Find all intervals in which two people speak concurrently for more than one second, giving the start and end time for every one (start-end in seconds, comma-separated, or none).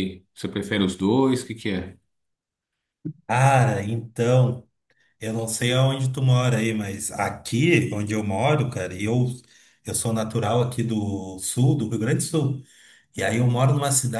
none